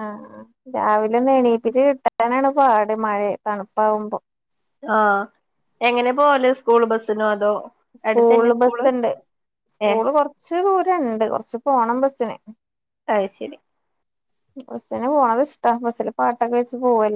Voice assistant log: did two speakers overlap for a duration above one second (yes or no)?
no